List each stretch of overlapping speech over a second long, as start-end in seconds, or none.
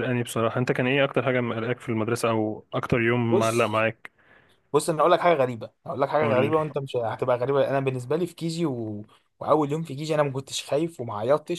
none